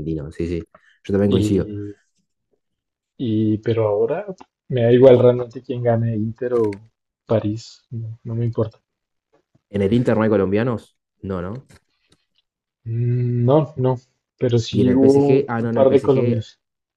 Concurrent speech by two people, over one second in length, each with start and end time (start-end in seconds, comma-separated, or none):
14.7-16.4